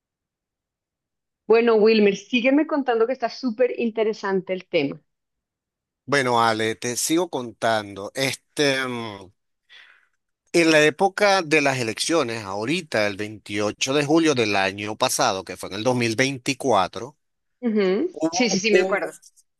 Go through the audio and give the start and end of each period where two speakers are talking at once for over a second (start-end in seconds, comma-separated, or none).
none